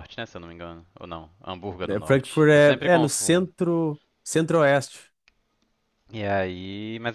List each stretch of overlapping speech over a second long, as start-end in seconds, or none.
1.9-3.5